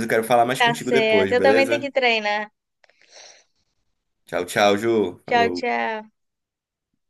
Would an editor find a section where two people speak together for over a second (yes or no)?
yes